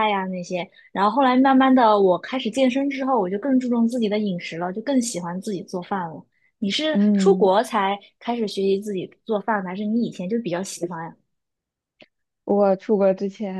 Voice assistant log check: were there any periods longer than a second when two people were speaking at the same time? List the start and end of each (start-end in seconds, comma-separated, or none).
none